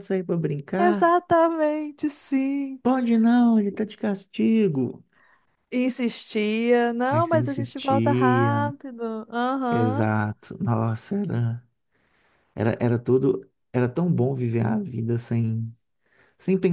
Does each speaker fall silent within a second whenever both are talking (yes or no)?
no